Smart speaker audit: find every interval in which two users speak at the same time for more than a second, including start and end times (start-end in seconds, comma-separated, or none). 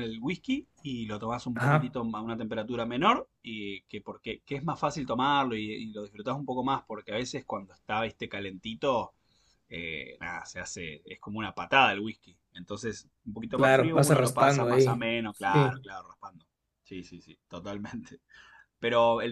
13.5-15.7